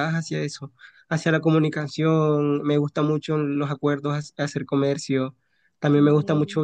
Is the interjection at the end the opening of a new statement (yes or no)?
no